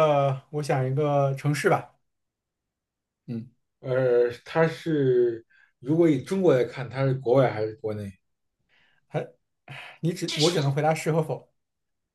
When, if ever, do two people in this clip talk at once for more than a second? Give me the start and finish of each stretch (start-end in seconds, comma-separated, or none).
none